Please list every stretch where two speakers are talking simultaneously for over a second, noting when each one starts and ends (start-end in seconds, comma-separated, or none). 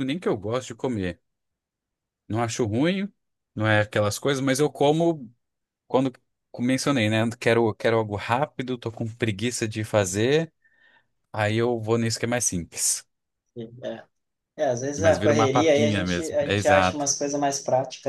15.0-17.1